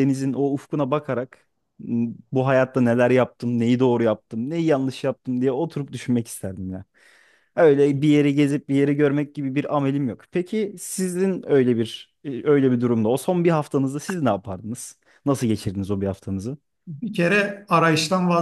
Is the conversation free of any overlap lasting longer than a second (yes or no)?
yes